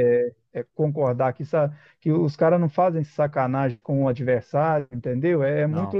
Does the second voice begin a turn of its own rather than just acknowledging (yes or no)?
no